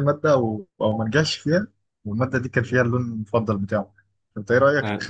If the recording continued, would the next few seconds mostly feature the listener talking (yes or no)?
no